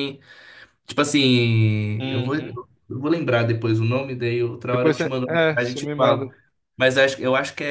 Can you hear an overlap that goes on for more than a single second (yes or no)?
yes